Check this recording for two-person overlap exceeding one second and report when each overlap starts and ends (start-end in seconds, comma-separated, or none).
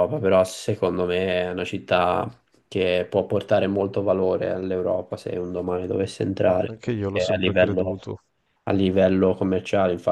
6.5-8.0